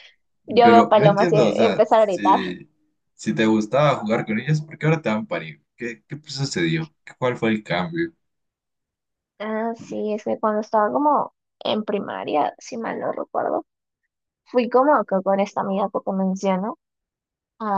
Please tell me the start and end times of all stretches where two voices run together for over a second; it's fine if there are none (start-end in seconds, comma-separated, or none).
0.6-2.4